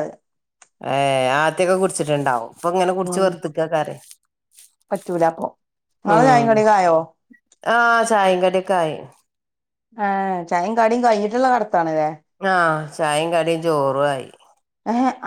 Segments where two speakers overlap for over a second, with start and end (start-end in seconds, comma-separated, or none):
none